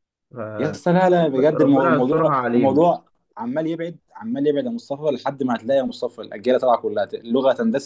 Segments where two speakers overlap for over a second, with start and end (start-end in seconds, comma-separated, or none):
1.2-2.8